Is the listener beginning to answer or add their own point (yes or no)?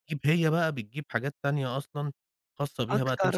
no